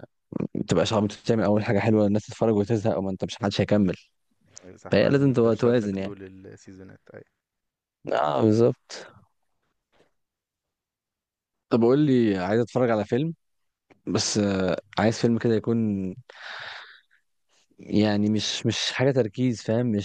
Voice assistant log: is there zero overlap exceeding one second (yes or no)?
no